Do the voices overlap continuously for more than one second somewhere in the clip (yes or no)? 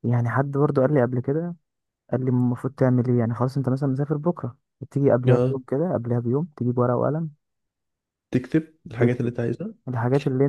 no